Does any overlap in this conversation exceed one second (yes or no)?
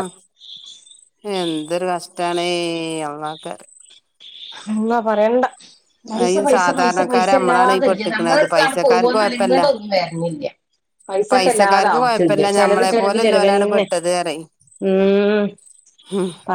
yes